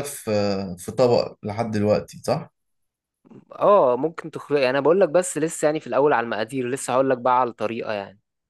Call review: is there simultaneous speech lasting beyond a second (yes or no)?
no